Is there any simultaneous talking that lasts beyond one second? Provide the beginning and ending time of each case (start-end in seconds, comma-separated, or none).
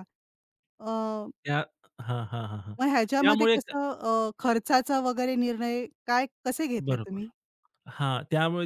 none